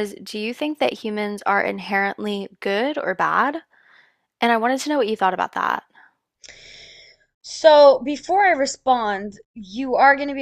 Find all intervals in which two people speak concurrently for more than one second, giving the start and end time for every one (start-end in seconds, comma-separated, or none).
none